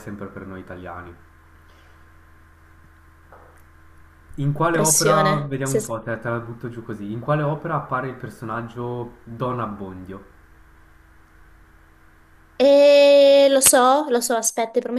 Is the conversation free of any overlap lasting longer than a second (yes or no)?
no